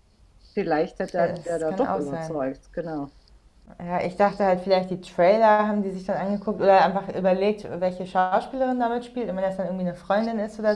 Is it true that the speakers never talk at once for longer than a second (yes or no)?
no